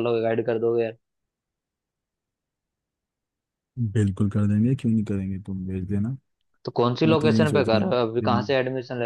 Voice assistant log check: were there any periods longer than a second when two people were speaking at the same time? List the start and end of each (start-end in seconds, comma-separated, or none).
7.0-8.5